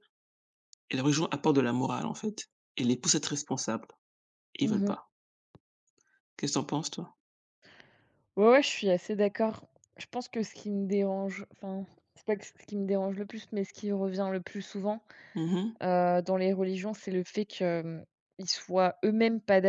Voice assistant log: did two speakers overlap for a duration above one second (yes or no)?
no